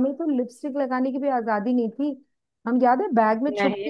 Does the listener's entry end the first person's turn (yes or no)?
no